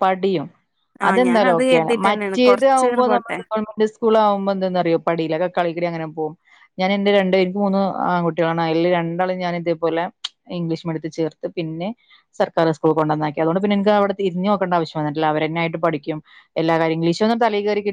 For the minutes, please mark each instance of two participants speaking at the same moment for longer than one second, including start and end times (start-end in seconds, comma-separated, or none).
1.1-3.4